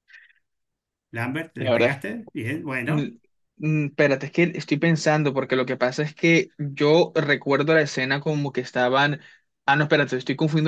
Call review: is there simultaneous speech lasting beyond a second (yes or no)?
no